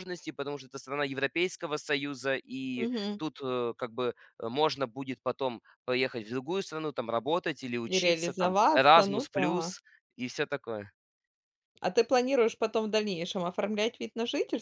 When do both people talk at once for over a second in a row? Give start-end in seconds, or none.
7.9-9.7